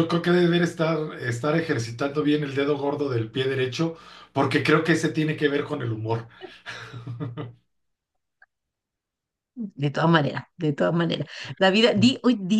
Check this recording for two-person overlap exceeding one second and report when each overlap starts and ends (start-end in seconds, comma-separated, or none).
none